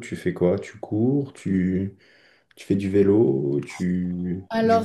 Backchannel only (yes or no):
no